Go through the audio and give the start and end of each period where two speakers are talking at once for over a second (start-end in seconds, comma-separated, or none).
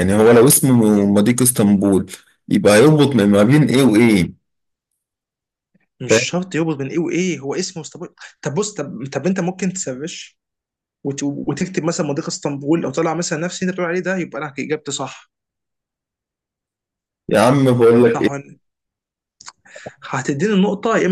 none